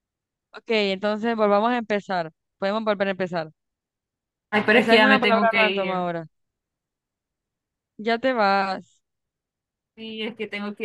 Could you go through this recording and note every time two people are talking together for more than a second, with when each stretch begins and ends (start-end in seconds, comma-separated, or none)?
4.7-6.1